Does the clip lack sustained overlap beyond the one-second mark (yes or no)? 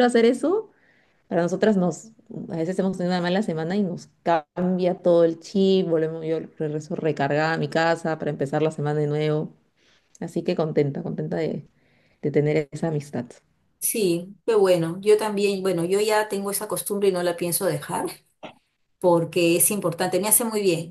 yes